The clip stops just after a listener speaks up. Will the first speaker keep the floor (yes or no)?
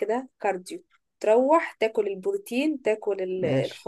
yes